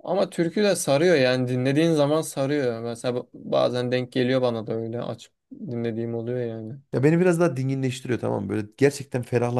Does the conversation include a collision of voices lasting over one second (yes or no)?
no